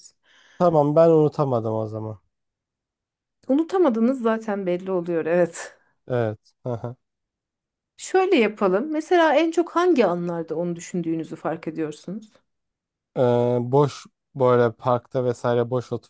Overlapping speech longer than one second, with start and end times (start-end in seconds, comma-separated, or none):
none